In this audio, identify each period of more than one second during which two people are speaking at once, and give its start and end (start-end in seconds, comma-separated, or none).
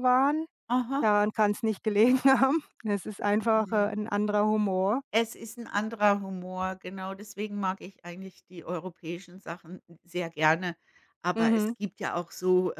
none